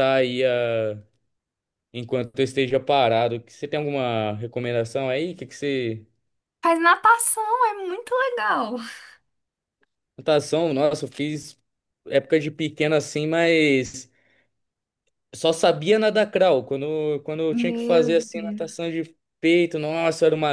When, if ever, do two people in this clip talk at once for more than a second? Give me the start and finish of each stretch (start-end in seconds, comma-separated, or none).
17.5-18.9